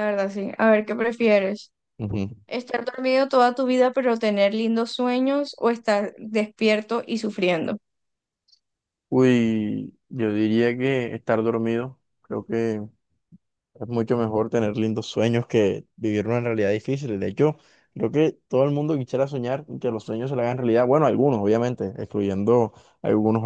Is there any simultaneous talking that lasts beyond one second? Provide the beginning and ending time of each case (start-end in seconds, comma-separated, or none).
none